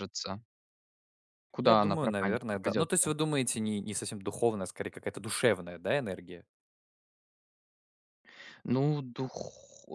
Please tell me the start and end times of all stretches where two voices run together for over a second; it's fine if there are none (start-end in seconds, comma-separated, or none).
1.6-3.1